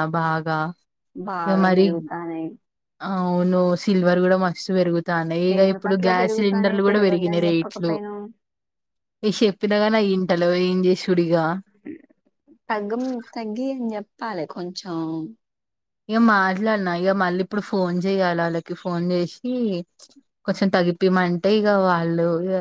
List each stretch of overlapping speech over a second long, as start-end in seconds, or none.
5.6-7.9